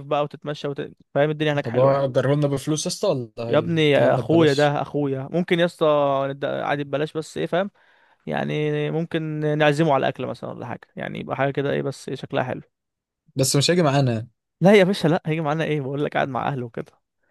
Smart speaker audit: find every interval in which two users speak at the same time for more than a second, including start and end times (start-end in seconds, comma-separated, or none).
3.5-4.8